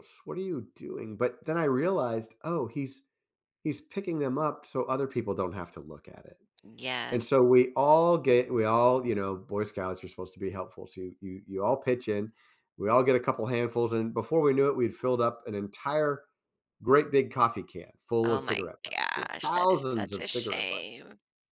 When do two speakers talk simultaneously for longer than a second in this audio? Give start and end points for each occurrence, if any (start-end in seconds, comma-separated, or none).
18.2-21.0